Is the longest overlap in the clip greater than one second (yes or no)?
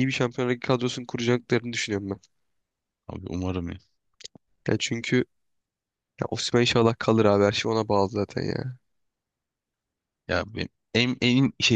no